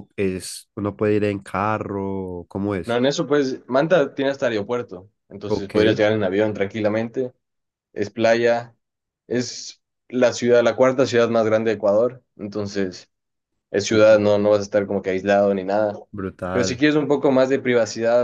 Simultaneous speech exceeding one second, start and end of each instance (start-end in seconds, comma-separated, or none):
none